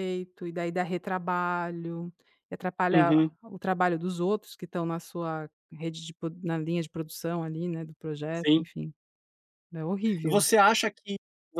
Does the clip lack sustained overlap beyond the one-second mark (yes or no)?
yes